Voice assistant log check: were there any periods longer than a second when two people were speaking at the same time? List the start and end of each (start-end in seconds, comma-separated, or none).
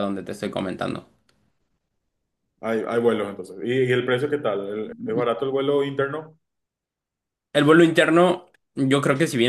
none